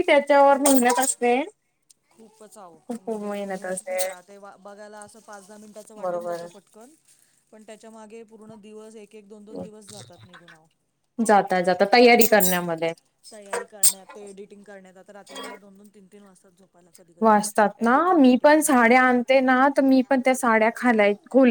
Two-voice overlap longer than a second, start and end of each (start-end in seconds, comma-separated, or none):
none